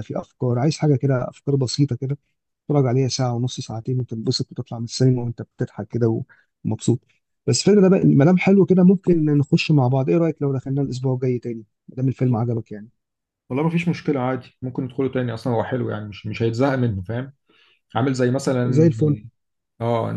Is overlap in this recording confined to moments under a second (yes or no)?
yes